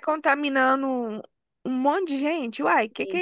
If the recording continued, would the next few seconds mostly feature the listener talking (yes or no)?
yes